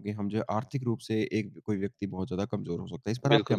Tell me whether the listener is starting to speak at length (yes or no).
yes